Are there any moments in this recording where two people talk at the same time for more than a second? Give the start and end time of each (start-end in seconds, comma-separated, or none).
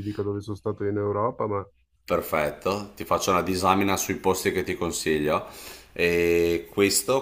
none